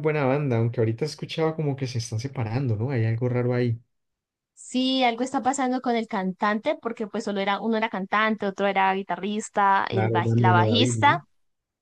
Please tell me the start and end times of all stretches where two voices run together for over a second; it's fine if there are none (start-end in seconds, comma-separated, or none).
9.9-11.2